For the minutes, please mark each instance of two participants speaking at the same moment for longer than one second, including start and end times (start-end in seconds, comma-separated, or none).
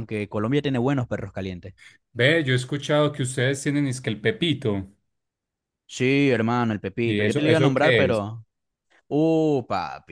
7.0-8.3